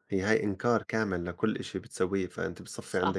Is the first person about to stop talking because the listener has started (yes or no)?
yes